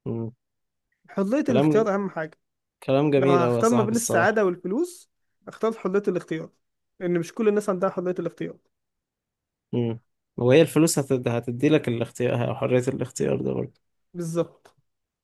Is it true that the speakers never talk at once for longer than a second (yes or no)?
no